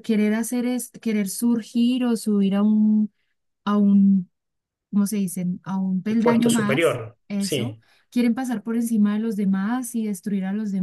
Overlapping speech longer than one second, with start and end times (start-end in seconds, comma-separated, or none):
6.2-7.8